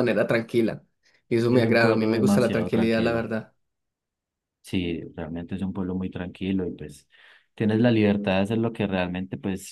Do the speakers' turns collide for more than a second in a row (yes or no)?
yes